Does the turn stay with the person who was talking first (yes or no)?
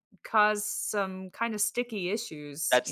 no